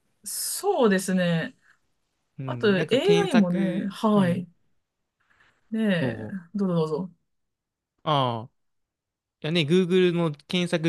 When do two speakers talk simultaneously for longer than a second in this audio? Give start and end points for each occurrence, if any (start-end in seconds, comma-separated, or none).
2.5-4.5